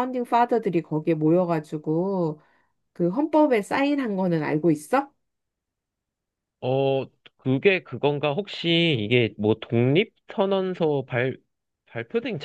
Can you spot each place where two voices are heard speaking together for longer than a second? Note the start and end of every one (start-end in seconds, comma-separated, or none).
none